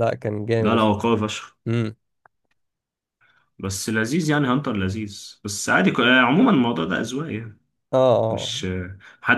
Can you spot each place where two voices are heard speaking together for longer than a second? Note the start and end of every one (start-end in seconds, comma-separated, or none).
none